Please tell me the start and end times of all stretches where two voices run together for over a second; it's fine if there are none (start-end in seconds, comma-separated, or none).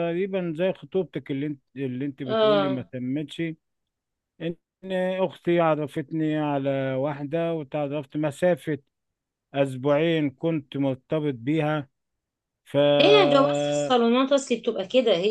none